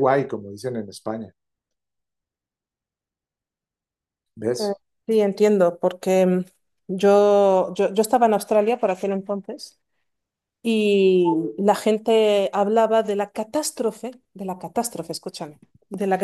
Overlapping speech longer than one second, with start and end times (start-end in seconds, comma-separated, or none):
none